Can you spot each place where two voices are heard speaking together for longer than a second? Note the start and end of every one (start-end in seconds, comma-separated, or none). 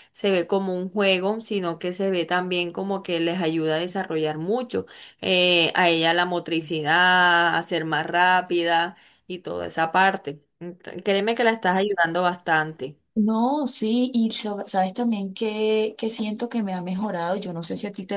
none